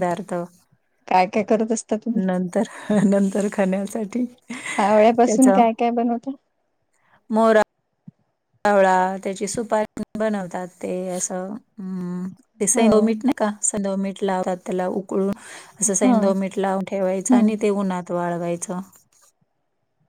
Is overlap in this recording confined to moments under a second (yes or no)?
yes